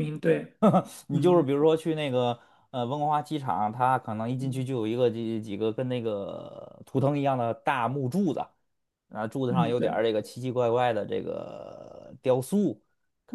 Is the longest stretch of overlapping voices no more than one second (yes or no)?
yes